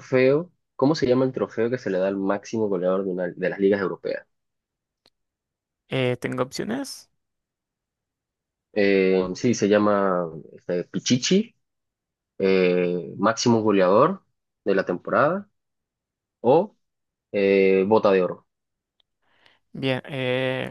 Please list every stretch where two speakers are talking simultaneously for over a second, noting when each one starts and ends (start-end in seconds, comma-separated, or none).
none